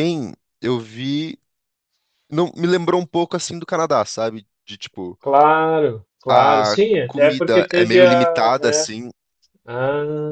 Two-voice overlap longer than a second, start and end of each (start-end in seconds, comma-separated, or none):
6.3-8.9